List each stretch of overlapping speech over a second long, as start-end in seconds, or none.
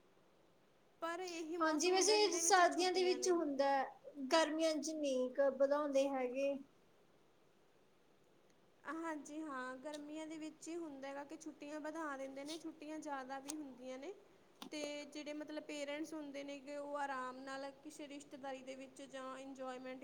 1.6-3.4